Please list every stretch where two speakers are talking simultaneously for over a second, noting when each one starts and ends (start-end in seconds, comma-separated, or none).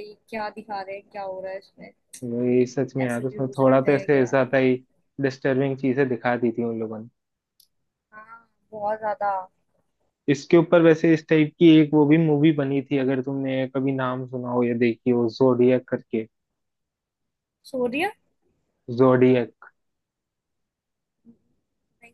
3.0-4.3